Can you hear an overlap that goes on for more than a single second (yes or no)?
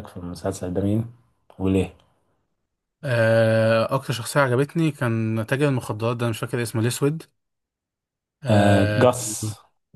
no